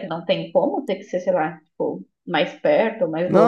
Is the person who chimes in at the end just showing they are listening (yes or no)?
no